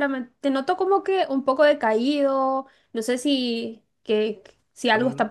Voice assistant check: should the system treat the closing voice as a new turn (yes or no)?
no